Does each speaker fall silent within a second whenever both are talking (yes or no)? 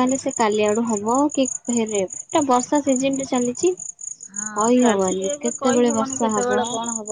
no